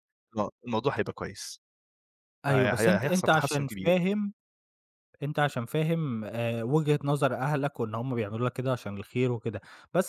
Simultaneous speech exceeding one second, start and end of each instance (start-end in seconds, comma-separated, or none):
2.5-4.0